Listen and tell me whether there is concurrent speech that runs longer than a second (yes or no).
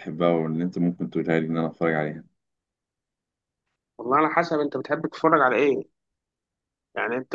no